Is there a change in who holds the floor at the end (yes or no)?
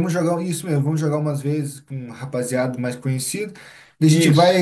no